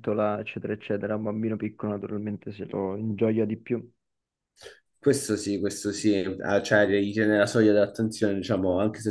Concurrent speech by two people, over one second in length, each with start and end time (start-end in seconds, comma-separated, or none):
none